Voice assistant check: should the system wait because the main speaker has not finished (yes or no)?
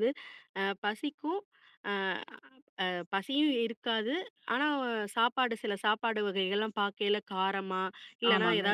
yes